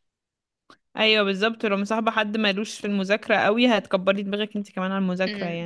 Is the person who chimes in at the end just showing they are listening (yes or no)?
no